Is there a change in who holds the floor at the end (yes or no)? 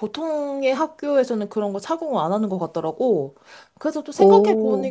no